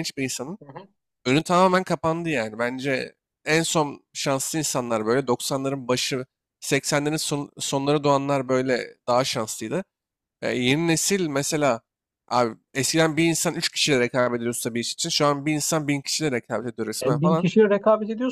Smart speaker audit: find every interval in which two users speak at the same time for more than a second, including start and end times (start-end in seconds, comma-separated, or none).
none